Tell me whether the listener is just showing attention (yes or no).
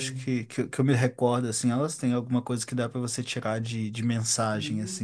no